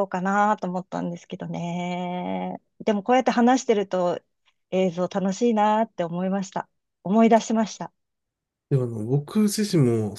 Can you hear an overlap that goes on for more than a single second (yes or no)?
no